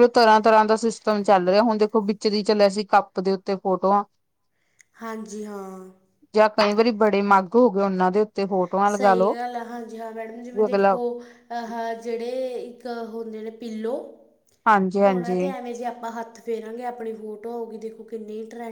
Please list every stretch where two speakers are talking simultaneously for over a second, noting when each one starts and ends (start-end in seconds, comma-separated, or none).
none